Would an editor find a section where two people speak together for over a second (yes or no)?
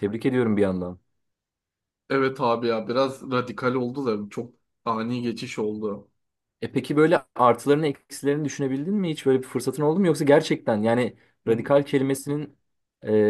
no